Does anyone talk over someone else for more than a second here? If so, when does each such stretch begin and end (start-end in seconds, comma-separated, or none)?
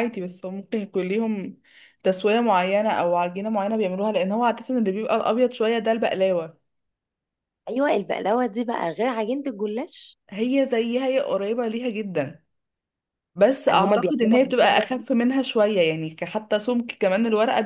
13.7-15.0